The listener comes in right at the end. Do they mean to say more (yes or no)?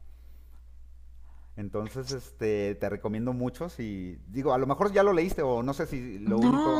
yes